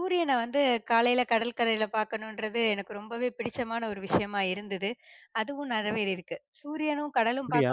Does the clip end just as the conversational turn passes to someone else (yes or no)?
no